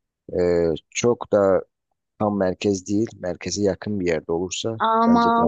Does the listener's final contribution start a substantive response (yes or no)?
yes